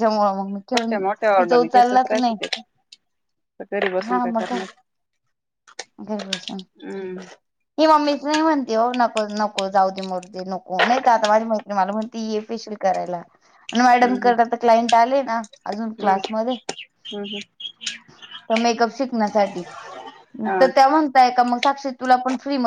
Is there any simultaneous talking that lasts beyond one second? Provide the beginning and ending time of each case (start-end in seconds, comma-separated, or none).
0.6-2.3